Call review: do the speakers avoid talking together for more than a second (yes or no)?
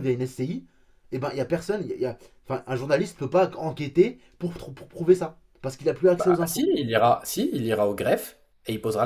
yes